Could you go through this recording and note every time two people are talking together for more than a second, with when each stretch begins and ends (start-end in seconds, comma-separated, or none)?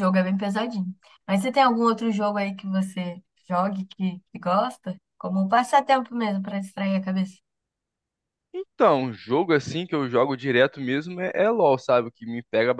none